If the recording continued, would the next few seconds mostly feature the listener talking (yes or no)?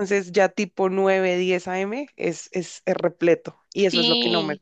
yes